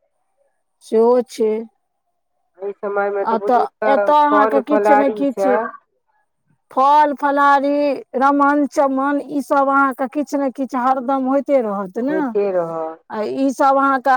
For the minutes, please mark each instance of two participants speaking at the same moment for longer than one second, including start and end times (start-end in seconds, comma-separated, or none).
3.3-5.6